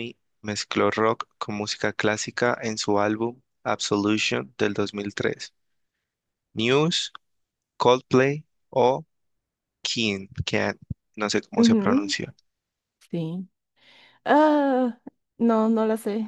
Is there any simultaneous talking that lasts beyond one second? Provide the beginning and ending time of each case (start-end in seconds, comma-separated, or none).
none